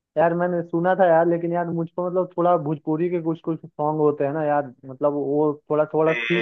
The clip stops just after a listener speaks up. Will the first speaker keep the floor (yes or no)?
yes